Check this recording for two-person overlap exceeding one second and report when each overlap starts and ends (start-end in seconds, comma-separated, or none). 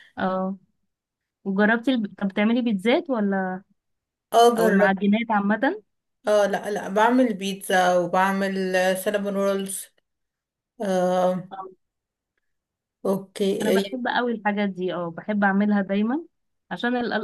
none